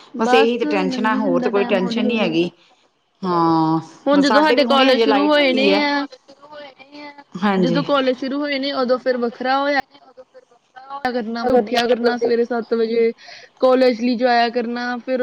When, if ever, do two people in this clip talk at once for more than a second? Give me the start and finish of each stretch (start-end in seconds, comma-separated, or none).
0.9-2.4, 4.2-5.8